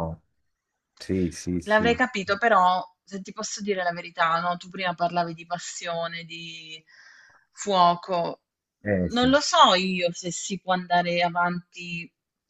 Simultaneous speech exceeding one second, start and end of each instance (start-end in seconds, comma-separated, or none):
none